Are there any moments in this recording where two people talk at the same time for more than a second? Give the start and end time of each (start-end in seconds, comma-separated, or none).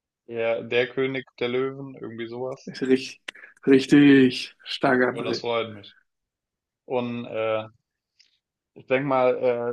none